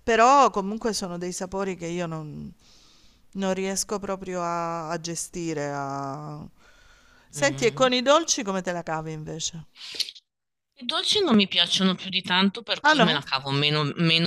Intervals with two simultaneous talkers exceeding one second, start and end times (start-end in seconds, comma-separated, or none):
none